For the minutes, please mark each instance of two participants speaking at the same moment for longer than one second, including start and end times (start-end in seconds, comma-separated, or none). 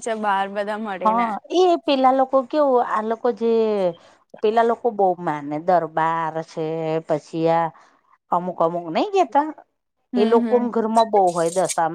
none